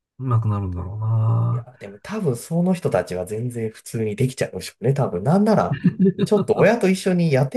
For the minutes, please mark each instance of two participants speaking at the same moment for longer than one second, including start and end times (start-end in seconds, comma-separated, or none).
none